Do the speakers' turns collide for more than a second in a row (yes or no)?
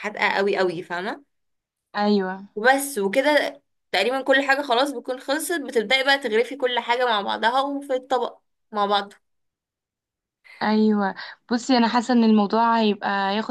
no